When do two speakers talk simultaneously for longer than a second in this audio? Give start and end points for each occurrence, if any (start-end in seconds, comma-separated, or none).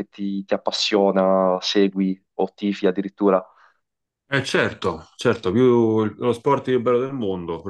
none